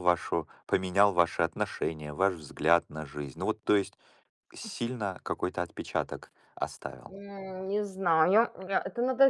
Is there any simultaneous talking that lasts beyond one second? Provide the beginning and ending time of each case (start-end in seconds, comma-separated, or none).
none